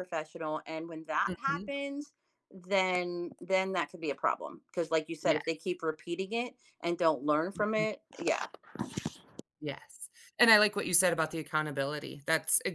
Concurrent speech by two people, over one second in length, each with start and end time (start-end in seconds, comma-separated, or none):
none